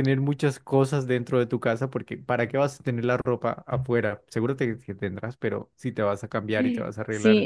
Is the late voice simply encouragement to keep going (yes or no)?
no